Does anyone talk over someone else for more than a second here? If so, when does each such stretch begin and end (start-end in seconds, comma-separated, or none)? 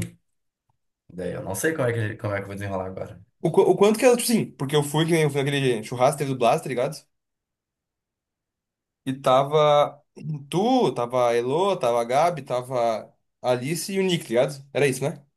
none